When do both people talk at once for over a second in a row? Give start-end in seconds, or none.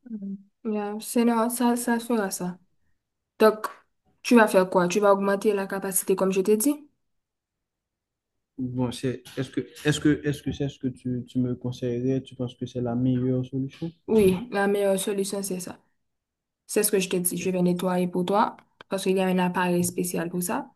none